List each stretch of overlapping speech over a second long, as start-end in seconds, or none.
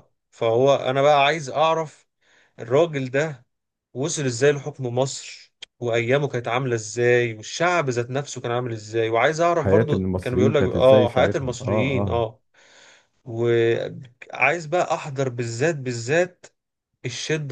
9.5-12.3